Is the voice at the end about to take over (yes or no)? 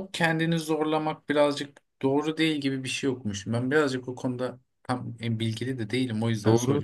yes